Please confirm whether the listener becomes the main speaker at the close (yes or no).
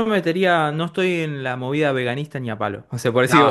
no